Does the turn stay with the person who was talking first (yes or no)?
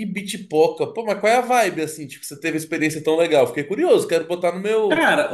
no